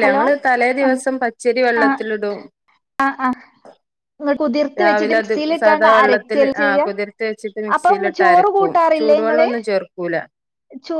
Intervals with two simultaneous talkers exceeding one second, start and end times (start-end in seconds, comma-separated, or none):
4.8-6.8, 7.8-9.5